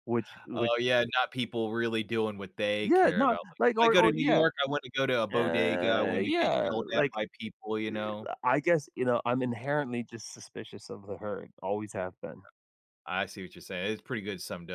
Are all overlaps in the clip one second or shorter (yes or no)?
no